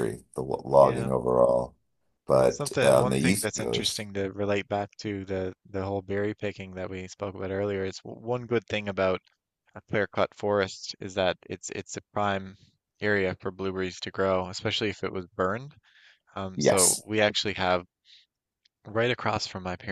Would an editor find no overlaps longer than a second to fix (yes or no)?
no